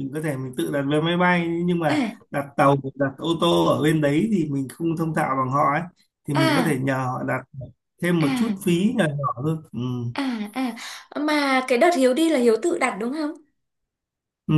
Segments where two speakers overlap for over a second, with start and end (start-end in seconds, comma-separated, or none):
none